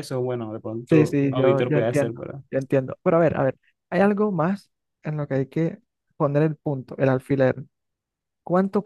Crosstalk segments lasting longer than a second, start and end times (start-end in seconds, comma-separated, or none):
0.8-2.4